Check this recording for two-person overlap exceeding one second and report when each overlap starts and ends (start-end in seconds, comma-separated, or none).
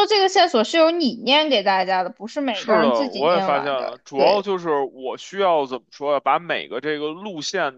2.5-4.5